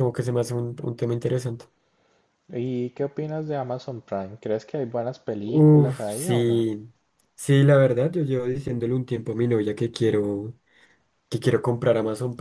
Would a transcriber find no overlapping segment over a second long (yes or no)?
no